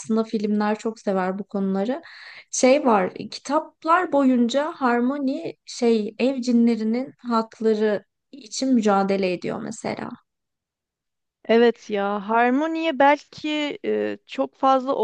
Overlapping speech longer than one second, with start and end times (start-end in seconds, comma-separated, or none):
none